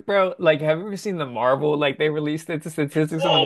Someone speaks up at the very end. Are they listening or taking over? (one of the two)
taking over